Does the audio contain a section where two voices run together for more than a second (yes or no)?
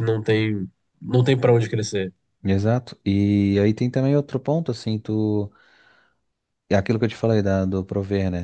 no